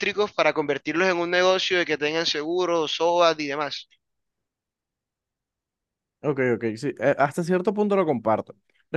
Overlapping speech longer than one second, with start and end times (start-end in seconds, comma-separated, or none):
none